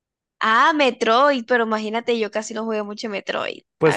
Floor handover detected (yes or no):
yes